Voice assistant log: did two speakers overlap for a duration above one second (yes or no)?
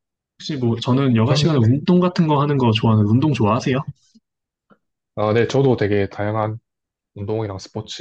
no